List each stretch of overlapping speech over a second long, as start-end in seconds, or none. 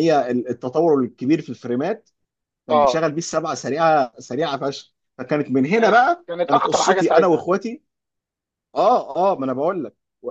5.8-7.5